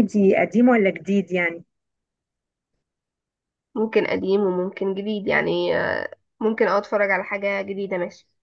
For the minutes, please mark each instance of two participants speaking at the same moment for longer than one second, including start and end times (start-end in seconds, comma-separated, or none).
none